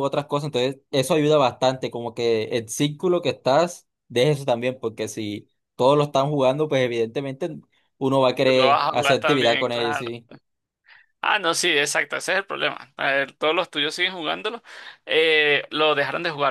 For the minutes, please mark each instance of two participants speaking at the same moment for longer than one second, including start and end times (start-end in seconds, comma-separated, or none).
8.4-10.1